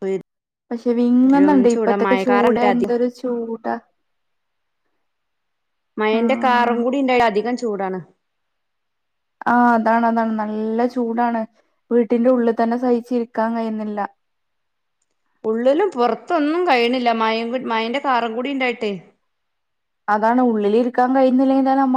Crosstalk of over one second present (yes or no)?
yes